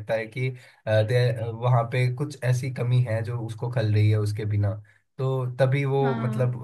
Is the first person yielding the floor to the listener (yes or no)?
no